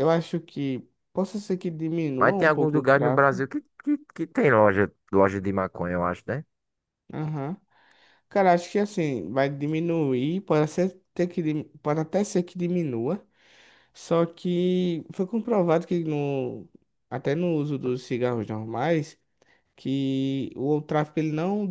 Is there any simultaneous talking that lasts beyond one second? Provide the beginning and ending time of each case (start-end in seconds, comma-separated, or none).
2.2-3.4